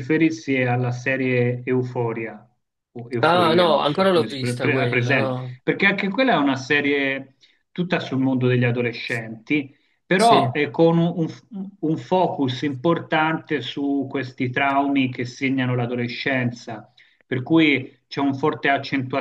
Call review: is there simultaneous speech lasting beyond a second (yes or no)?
yes